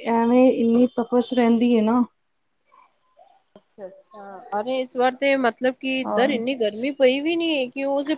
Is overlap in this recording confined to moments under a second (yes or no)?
yes